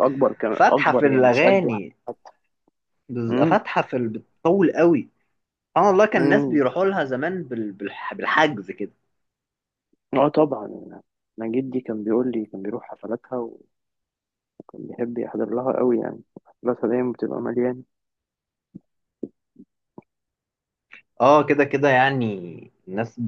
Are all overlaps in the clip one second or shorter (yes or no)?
no